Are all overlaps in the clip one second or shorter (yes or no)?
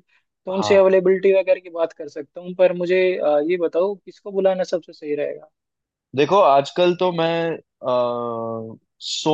yes